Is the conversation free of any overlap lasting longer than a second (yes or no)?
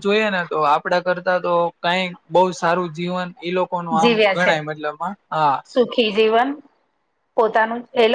yes